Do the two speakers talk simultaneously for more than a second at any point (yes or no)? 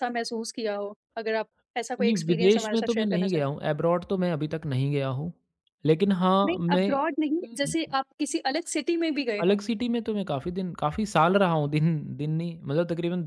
yes